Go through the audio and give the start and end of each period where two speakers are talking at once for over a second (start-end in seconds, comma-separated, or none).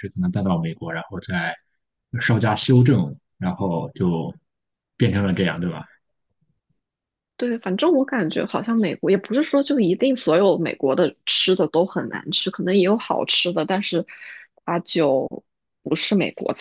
none